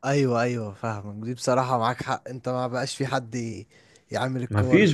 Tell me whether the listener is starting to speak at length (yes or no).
yes